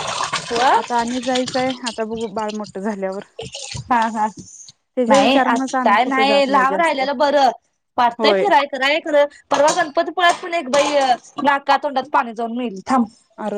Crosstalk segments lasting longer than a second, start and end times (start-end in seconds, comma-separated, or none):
5.1-7.0